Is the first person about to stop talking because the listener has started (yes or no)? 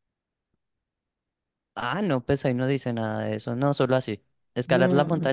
no